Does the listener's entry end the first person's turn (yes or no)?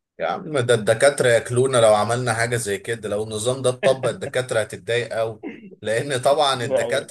no